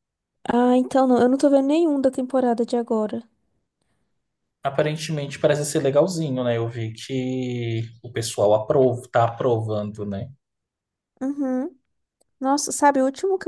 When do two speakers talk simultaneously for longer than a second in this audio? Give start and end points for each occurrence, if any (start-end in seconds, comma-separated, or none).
none